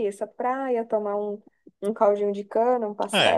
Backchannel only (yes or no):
no